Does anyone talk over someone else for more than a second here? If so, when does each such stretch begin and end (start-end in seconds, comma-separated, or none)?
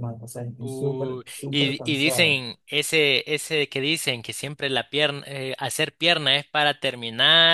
0.6-2.4